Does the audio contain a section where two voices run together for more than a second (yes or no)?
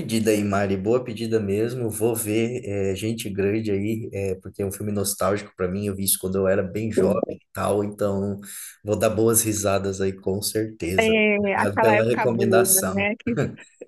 yes